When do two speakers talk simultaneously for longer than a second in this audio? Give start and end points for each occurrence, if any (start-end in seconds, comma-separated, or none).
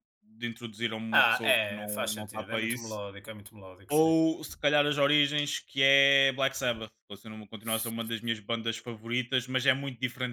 1.1-3.0